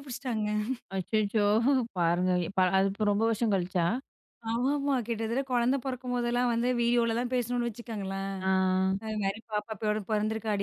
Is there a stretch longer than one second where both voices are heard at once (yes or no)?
no